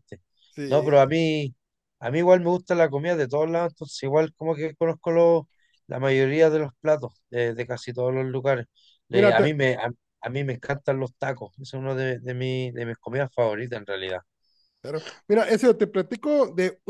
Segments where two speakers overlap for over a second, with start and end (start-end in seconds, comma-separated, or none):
none